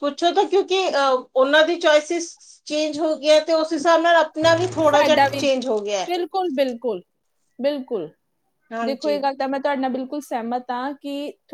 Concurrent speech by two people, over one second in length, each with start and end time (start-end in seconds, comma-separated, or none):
none